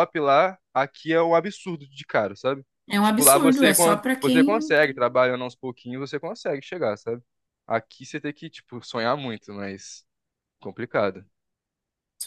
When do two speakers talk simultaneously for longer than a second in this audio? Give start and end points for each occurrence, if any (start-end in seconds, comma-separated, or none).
3.0-4.8